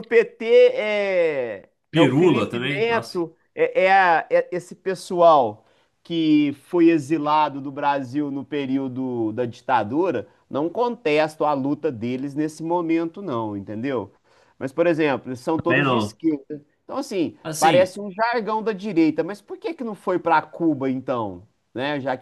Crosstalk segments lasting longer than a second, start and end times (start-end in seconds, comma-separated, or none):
1.9-3.2